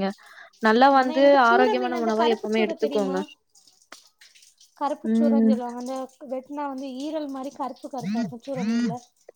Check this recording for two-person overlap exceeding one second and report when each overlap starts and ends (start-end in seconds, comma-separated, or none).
1.0-3.2